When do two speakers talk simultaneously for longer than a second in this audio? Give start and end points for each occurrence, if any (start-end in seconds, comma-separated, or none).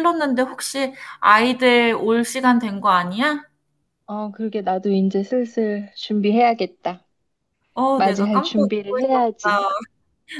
8.0-9.7